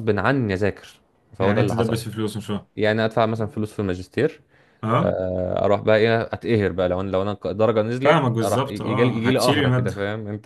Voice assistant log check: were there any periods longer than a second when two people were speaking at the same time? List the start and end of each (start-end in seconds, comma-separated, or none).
8.0-9.9